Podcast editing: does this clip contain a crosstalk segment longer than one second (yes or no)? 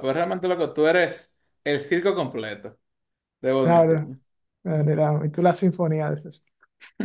no